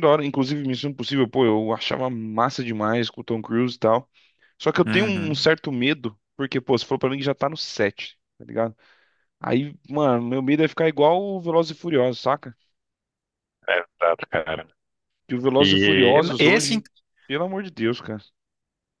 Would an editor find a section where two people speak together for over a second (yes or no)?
yes